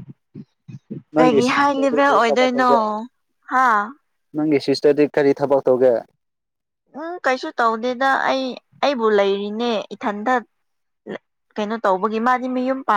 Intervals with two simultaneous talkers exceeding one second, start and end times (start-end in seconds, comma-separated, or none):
1.1-2.7